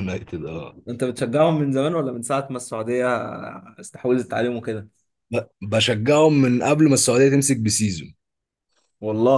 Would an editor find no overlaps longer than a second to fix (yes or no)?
yes